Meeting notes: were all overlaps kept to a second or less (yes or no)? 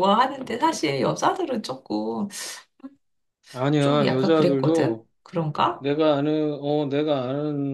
no